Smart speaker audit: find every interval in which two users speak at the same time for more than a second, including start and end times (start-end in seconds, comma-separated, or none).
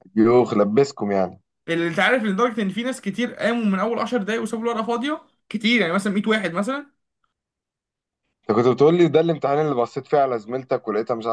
none